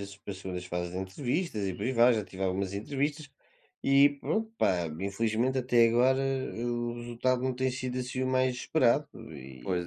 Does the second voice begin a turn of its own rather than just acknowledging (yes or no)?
yes